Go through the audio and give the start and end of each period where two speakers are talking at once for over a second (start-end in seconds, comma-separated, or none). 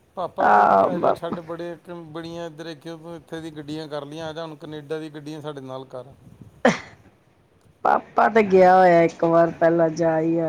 none